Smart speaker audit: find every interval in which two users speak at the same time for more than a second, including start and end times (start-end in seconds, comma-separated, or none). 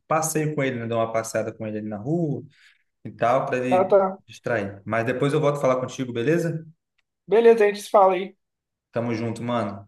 none